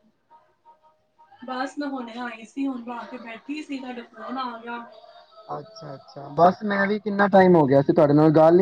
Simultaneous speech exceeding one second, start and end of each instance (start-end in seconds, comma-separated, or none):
none